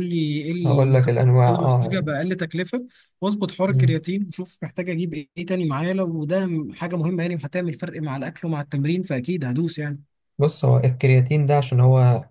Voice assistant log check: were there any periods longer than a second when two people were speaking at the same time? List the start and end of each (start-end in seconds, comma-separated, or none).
0.6-2.0